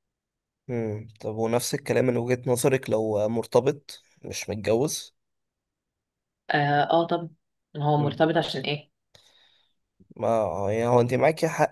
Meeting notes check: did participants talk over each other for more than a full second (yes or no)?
no